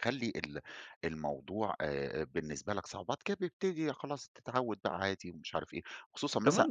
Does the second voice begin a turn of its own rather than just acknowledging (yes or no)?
yes